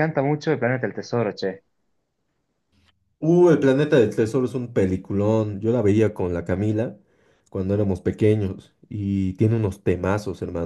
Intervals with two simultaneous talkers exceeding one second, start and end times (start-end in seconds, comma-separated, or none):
none